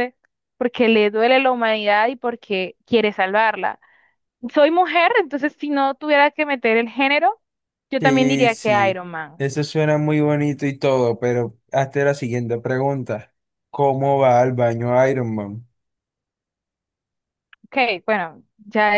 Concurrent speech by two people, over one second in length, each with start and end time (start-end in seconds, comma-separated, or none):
8.0-9.5